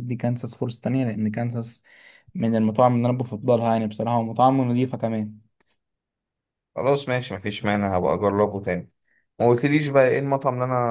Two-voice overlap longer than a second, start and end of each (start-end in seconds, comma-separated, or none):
none